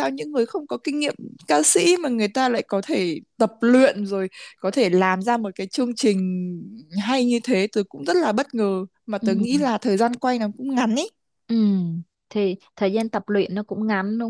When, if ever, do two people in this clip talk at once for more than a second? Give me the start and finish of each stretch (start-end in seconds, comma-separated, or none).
none